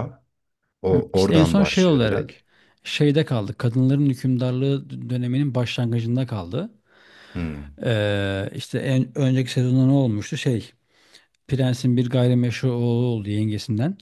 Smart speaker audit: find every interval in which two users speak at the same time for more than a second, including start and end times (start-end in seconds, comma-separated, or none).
0.9-2.3